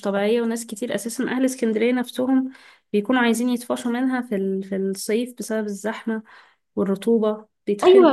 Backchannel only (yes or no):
no